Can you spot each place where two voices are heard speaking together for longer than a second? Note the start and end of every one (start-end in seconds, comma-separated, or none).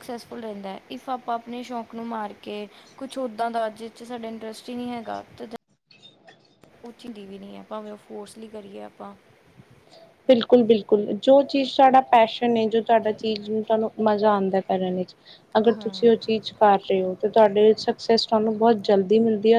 none